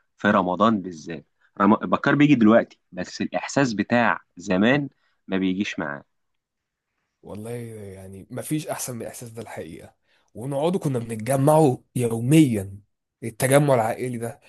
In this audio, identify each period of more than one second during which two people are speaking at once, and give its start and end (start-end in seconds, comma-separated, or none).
none